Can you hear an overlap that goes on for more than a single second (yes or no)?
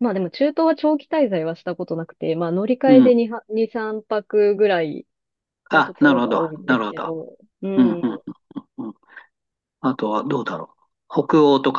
yes